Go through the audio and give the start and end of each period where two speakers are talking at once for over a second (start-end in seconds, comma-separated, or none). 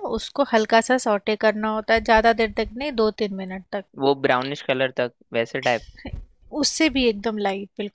none